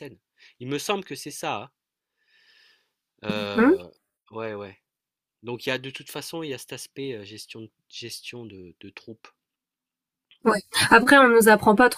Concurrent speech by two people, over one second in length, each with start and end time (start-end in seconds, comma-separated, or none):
none